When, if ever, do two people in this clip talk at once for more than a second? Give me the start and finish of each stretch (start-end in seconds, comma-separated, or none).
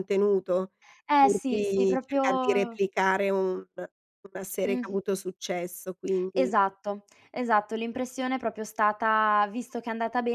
1.2-2.8